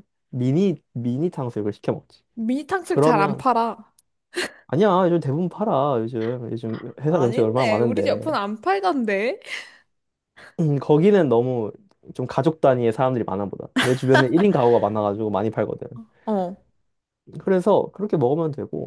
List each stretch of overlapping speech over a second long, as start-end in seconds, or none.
7.1-8.3